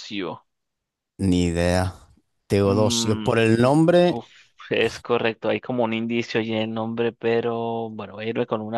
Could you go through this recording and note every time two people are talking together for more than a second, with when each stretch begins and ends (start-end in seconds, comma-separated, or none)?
none